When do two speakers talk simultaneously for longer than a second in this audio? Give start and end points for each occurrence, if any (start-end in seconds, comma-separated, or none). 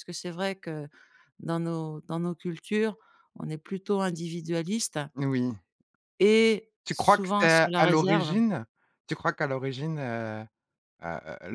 6.8-8.3